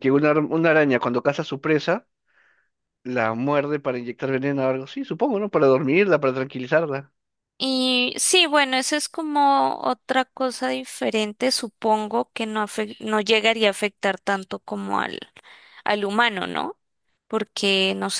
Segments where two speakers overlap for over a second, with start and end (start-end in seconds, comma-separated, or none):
none